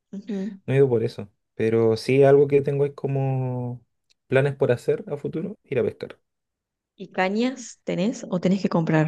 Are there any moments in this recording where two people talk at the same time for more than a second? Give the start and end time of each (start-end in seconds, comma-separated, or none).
none